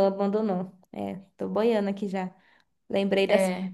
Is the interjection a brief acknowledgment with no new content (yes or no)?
yes